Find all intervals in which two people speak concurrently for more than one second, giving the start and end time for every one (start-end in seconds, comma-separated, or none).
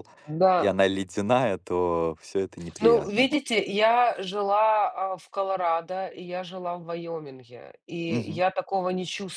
none